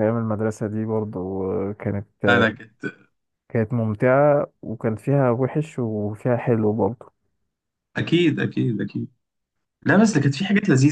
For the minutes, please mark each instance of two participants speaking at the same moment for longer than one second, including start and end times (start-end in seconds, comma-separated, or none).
none